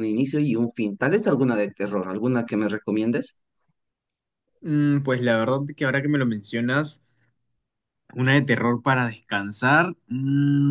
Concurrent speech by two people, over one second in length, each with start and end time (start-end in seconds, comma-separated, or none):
none